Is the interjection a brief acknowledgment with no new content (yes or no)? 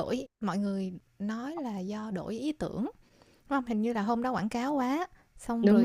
yes